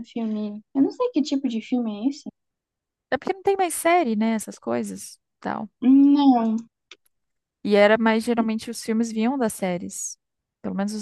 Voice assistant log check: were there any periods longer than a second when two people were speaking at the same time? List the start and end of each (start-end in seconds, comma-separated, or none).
none